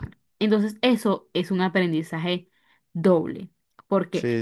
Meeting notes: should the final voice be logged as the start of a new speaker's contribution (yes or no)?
no